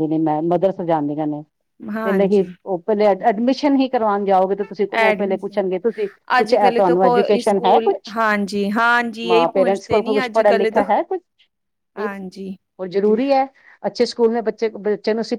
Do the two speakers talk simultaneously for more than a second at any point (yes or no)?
yes